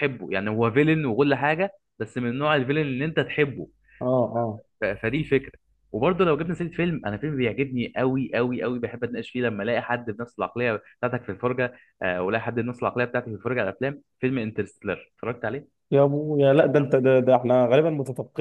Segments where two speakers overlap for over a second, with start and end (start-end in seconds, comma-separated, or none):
none